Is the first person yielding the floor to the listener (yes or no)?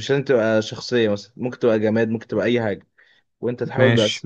no